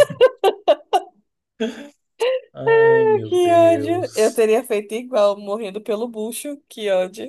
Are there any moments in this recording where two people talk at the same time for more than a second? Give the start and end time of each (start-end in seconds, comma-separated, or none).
2.7-4.4